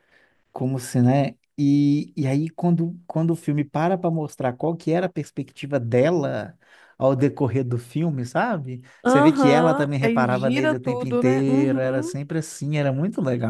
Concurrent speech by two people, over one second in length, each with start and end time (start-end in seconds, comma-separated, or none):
9.0-12.1